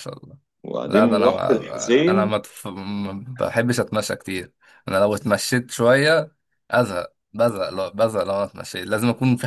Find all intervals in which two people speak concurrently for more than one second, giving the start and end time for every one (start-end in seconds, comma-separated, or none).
0.9-2.3